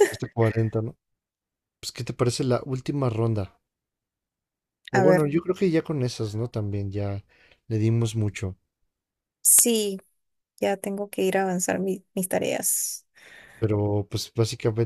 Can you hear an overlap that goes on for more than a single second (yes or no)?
no